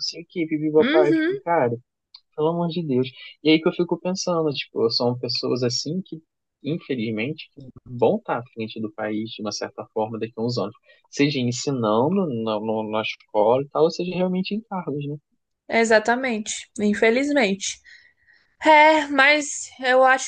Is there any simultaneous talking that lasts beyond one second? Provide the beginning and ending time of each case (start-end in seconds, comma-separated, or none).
none